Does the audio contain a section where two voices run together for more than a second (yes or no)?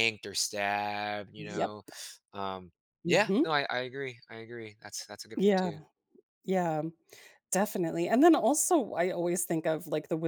no